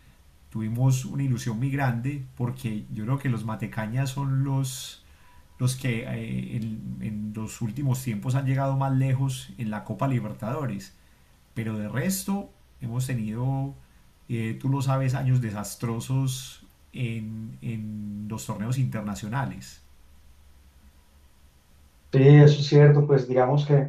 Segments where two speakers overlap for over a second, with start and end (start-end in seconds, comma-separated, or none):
none